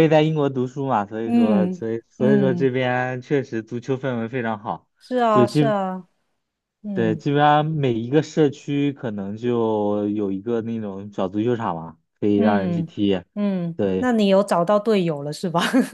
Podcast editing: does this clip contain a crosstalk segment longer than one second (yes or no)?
yes